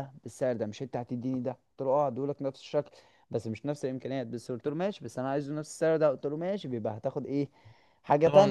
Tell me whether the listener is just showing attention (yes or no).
no